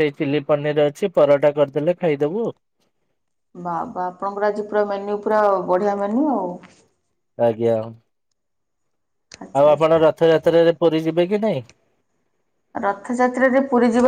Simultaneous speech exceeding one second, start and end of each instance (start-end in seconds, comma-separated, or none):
none